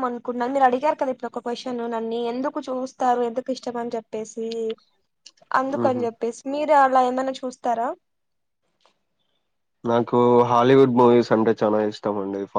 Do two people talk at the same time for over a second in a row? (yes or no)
no